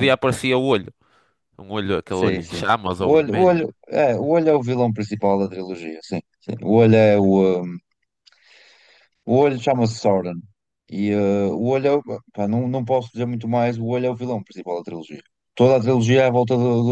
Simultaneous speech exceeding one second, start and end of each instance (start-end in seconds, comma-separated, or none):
2.1-3.6